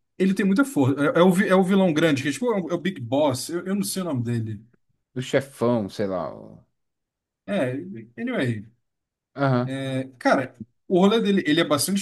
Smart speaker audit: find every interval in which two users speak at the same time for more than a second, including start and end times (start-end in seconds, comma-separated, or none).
none